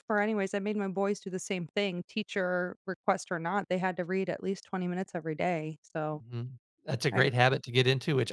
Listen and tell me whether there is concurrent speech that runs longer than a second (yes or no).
no